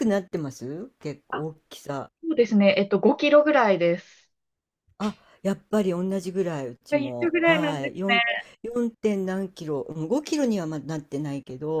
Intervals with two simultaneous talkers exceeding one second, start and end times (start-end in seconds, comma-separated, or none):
6.9-8.2